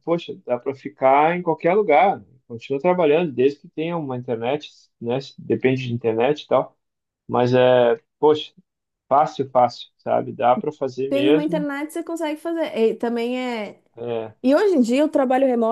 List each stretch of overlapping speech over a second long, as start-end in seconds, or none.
none